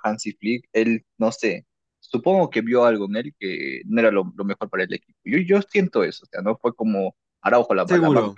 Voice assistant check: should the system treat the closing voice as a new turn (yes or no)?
no